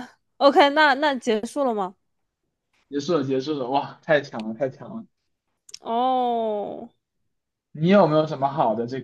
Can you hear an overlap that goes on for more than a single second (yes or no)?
no